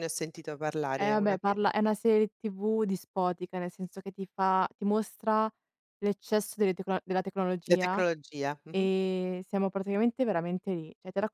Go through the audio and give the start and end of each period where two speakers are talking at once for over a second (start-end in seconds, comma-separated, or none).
none